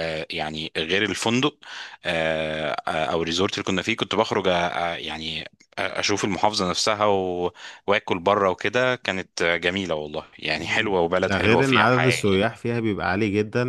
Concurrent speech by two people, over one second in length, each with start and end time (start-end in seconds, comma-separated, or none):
10.6-12.4